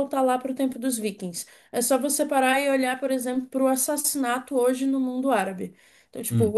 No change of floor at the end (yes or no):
yes